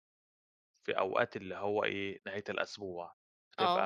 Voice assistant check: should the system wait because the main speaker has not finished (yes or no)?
no